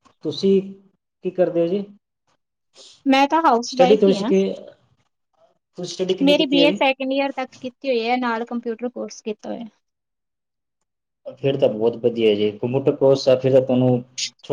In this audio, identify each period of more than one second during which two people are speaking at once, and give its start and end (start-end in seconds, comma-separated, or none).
none